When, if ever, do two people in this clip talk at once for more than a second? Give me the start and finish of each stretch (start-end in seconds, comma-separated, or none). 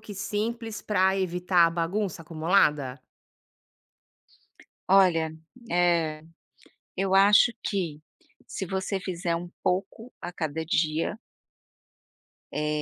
none